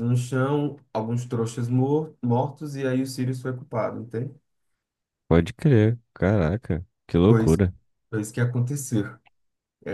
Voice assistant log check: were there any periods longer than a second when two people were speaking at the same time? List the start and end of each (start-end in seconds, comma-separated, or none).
none